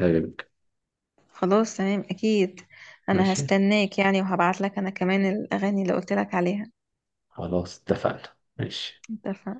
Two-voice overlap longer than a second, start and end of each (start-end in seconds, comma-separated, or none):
none